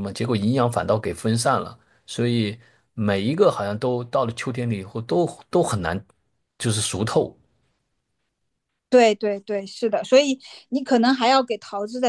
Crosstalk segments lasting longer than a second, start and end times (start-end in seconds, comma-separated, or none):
none